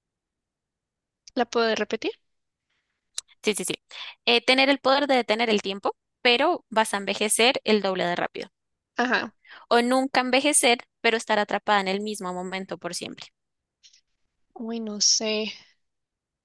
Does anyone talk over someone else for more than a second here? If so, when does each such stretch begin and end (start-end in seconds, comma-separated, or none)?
none